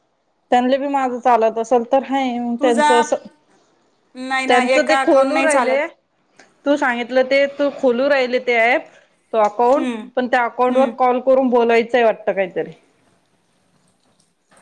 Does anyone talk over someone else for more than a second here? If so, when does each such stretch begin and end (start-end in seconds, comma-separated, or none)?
4.5-5.8